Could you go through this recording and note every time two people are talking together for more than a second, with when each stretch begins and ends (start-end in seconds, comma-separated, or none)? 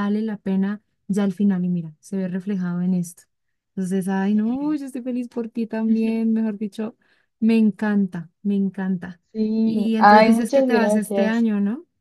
9.6-11.5